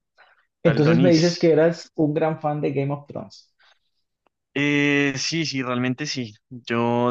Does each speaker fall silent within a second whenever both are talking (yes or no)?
yes